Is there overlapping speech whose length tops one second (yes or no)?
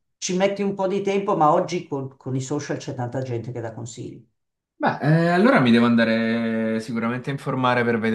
no